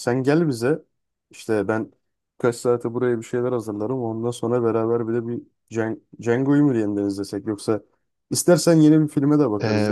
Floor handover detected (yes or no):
yes